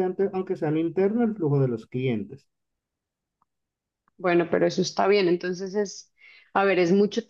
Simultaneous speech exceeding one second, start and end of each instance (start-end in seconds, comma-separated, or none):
none